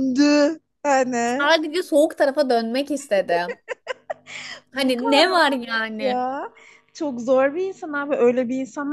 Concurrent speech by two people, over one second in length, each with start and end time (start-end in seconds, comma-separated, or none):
4.7-6.2